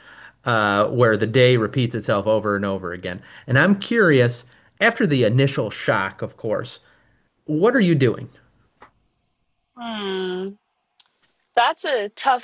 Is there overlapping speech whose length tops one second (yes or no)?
no